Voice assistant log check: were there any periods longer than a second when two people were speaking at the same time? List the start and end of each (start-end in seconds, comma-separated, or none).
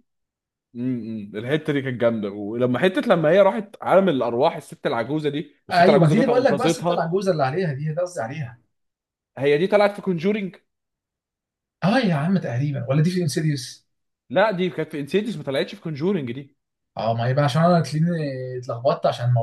5.7-7.0